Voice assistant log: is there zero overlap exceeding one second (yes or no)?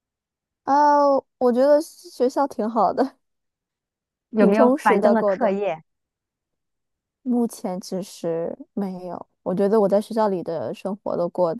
no